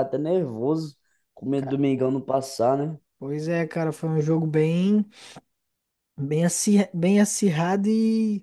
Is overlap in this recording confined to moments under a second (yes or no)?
yes